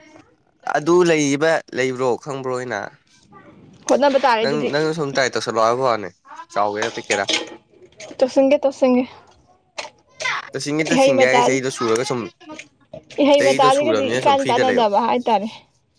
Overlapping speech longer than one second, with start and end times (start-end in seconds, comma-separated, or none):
13.4-14.8